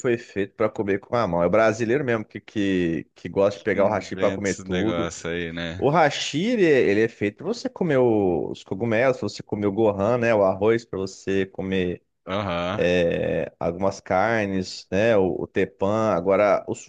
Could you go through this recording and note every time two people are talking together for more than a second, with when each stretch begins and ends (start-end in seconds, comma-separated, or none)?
3.7-5.1